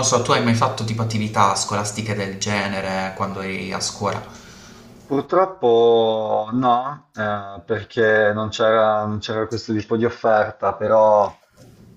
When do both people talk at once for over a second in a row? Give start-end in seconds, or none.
none